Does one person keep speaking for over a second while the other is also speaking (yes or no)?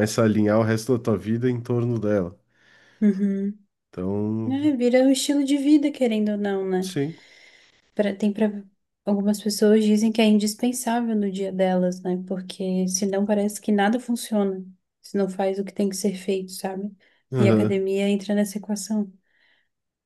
no